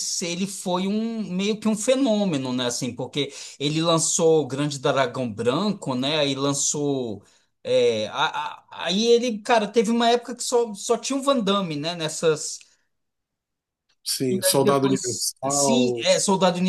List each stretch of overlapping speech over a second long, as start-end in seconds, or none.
14.3-16.1